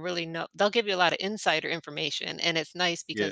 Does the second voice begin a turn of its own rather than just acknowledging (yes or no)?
no